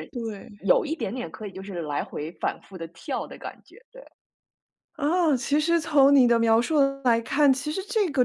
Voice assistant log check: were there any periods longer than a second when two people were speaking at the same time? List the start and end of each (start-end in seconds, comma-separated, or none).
none